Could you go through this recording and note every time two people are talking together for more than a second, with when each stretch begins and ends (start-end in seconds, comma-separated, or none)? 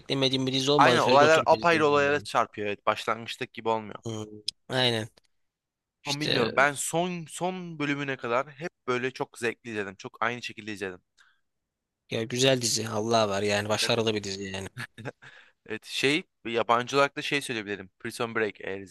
0.8-2.3